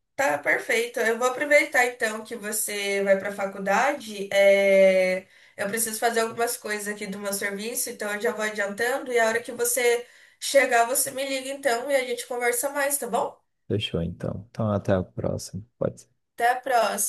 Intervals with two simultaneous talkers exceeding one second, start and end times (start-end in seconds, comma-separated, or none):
none